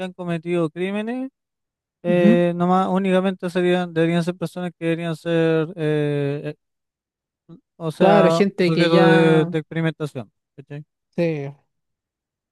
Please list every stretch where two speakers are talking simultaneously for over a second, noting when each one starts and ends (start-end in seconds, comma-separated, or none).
8.0-9.5